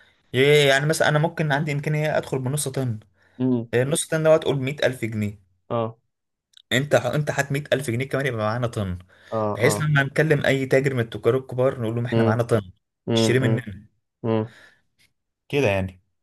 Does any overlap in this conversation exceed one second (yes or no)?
no